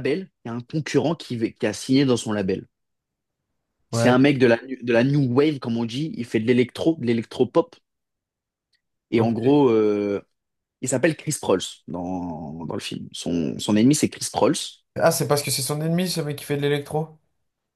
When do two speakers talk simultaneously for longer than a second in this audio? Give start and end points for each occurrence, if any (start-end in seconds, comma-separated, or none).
none